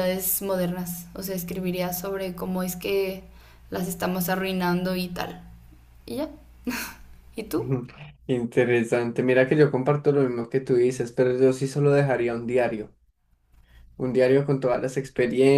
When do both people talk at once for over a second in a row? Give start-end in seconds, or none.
none